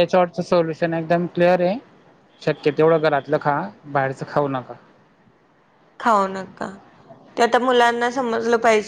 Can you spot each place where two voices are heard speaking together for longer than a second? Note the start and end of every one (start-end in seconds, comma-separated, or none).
none